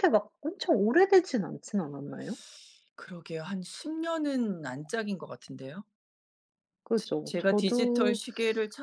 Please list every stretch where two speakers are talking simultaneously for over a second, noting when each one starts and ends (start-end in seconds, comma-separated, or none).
7.0-8.2